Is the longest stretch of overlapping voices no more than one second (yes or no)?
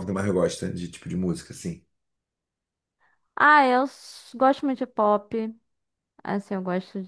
yes